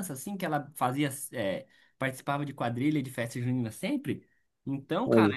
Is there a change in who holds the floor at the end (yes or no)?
no